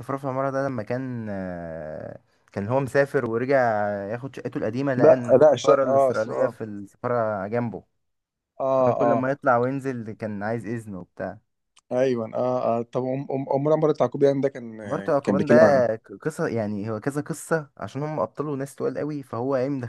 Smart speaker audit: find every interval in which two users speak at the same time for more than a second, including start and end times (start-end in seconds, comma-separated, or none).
5.0-6.5